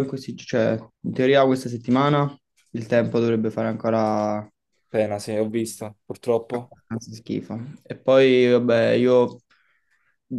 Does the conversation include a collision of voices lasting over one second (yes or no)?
no